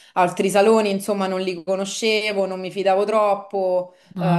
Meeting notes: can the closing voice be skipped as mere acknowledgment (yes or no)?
yes